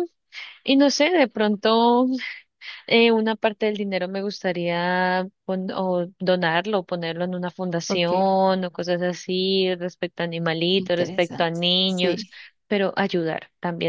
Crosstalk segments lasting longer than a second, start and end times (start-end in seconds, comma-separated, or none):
10.8-12.3